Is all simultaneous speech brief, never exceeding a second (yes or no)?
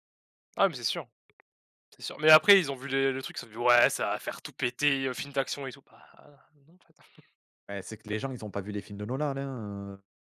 yes